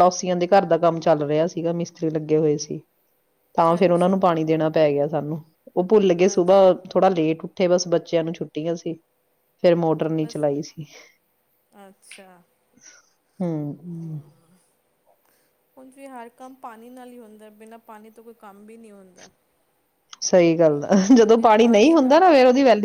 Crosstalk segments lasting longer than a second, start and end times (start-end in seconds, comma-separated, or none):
none